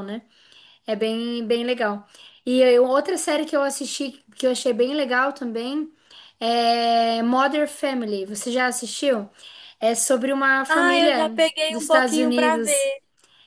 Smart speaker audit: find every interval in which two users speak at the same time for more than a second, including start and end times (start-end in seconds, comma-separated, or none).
10.7-12.9